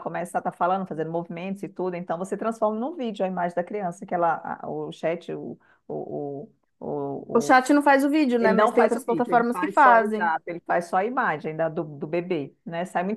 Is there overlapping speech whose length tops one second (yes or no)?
yes